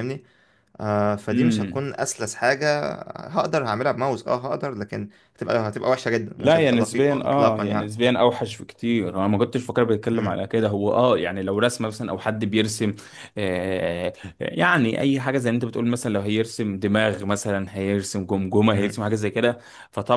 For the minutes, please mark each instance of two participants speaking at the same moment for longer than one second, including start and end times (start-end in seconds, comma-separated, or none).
6.4-7.9